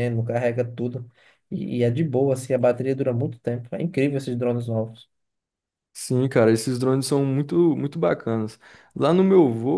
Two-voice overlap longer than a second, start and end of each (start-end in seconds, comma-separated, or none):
none